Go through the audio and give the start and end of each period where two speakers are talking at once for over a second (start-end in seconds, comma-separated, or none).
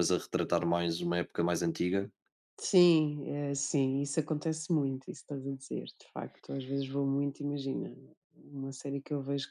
none